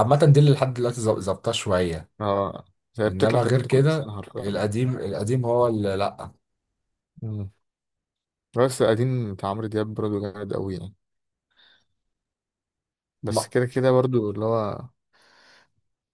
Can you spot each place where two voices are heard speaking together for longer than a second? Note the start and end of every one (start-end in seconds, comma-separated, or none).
3.1-4.5